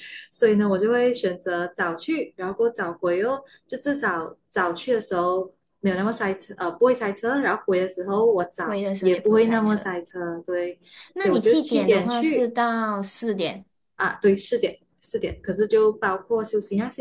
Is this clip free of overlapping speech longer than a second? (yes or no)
no